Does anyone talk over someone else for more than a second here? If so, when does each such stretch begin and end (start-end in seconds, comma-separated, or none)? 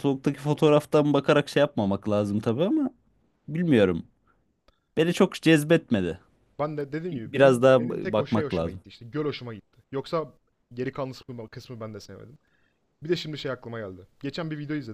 7.1-8.8